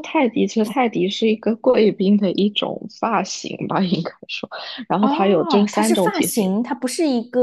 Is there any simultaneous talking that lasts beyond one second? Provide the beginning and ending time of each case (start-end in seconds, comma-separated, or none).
5.0-6.5